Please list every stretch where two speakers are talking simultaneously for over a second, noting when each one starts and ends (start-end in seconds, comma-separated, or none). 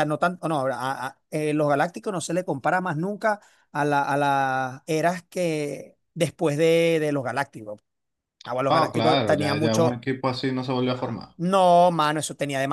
8.7-10.1